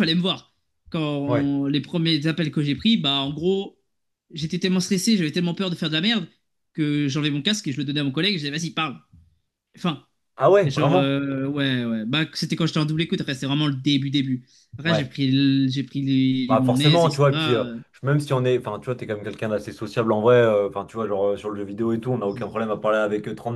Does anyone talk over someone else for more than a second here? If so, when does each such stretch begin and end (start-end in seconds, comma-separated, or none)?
16.5-17.8